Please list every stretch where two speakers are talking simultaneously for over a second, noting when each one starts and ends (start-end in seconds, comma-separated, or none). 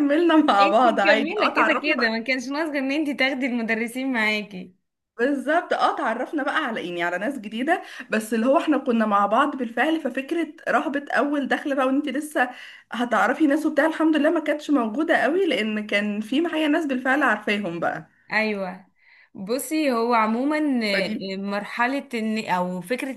0.6-2.2